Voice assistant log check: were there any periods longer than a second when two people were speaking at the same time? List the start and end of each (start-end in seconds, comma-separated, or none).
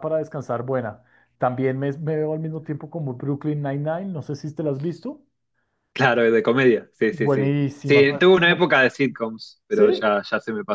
7.1-8.7